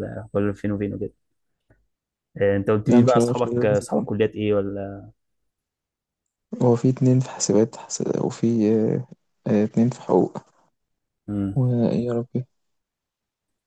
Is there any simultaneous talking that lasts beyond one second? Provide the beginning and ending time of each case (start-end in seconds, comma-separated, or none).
2.9-4.1